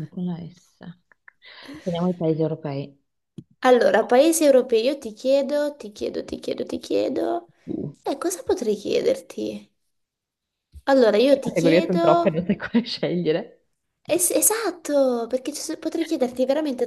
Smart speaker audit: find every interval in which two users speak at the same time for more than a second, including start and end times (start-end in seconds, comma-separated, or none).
11.3-12.5